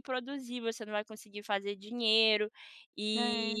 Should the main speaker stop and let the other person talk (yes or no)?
no